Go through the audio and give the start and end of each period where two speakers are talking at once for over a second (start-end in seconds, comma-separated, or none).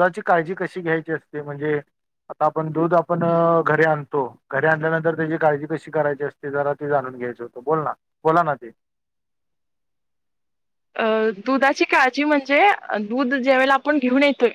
none